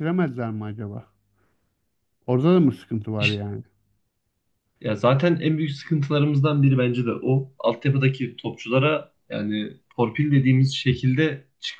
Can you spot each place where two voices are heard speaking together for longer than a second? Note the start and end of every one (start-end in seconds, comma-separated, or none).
none